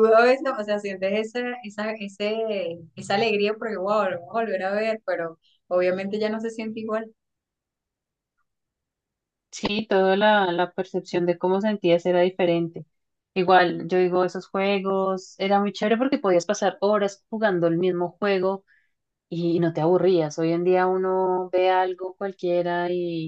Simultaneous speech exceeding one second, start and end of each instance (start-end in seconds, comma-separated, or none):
none